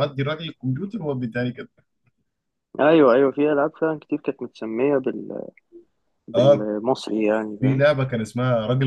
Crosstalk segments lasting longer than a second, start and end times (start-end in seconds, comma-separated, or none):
none